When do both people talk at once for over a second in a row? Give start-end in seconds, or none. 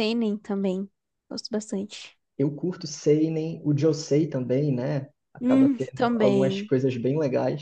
5.4-6.7